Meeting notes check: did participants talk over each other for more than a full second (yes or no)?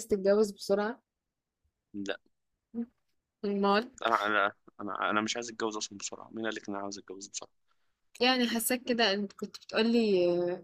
no